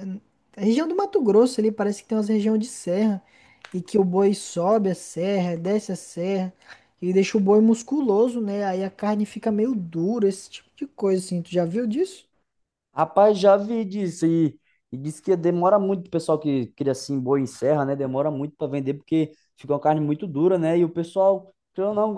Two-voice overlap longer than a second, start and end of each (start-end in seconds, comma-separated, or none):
none